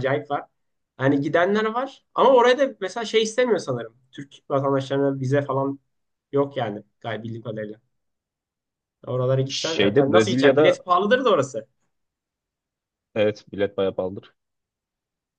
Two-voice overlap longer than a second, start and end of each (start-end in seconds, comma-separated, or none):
9.5-10.8